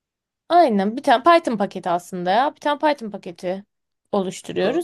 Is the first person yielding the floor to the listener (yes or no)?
no